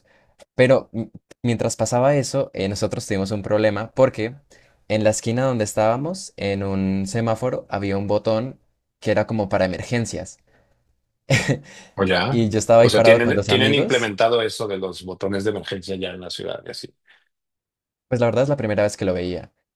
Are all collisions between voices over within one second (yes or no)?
no